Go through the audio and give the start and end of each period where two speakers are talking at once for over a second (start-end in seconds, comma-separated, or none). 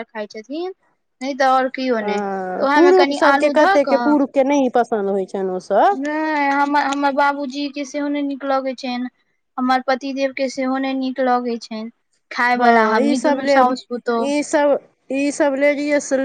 2.0-4.0